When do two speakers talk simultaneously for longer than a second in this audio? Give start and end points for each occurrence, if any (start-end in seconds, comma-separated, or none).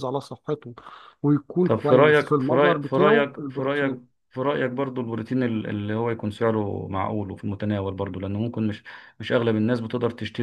1.6-4.0